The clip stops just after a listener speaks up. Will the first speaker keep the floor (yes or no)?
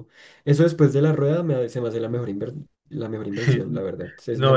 no